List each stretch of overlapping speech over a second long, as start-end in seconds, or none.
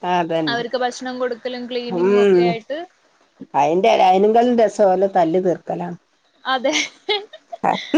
none